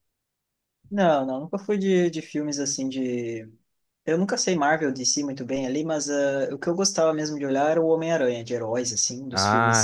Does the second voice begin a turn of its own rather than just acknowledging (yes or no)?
no